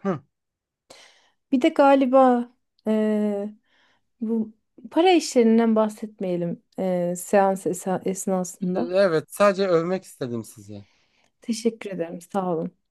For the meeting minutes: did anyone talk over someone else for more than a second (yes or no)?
no